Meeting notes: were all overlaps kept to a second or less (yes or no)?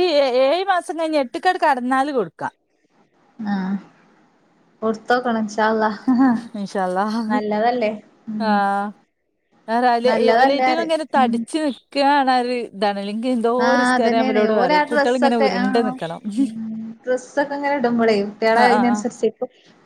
no